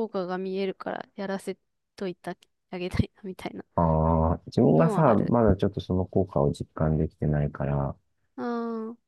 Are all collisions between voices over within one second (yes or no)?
yes